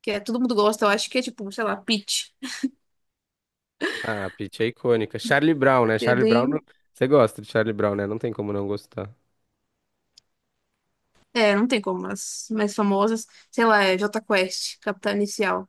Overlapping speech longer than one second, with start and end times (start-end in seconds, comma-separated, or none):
none